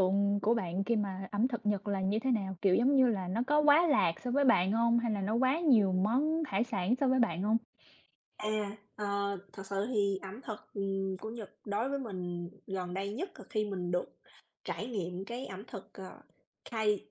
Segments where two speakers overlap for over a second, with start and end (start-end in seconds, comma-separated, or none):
none